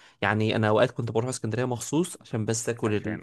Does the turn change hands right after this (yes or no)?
no